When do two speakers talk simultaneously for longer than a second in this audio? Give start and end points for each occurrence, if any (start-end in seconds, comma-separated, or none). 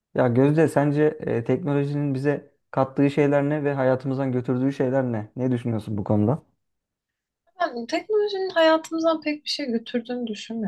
none